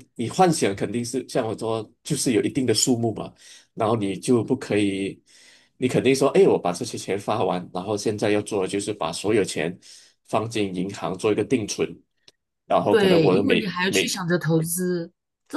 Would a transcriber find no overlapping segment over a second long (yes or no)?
no